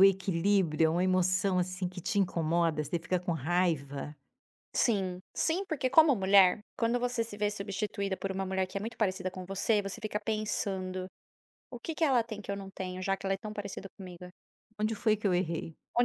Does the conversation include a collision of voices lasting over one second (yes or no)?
no